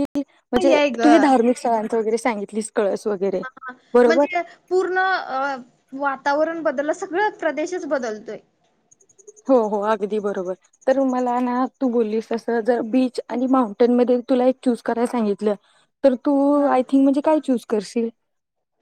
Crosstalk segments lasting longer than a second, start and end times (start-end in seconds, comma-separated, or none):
none